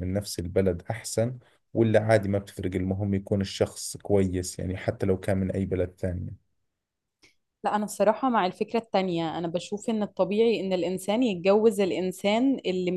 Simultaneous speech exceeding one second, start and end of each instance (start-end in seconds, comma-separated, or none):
none